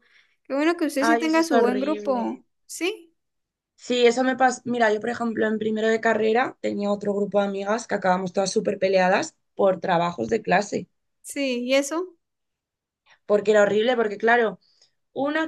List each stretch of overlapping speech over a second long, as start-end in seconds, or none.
1.0-2.4